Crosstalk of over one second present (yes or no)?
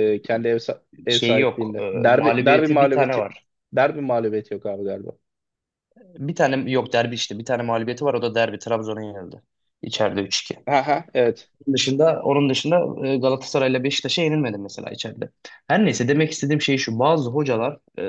yes